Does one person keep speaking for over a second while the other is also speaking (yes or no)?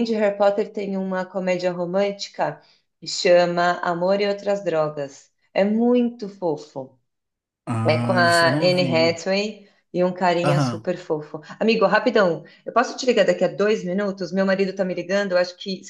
yes